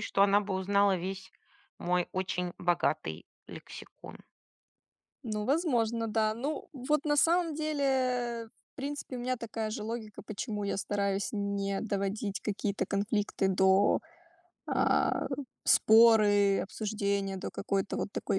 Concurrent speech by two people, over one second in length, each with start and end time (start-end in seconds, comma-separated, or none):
none